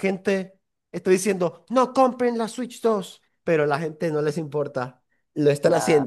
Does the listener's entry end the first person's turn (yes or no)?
no